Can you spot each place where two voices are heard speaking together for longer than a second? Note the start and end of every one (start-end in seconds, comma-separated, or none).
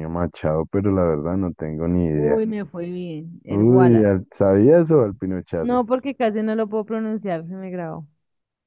none